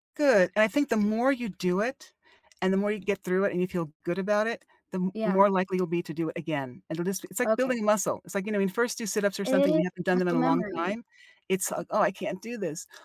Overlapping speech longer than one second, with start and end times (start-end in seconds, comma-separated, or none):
9.4-11.0